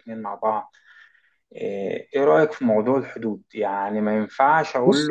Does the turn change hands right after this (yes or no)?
no